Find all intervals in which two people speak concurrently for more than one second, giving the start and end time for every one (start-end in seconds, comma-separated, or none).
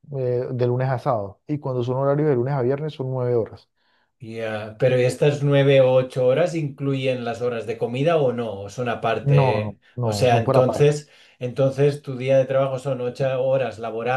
9.2-10.9